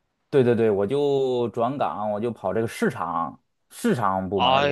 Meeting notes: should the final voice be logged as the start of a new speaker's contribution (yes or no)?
yes